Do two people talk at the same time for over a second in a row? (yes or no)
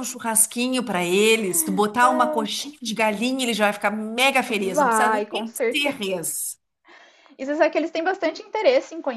yes